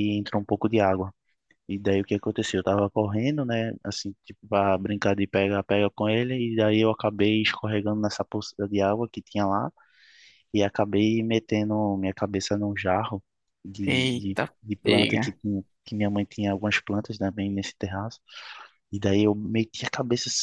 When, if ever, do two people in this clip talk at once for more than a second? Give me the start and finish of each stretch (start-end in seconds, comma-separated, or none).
13.8-15.4